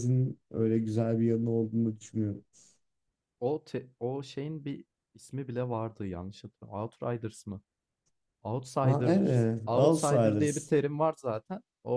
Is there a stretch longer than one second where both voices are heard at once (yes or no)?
yes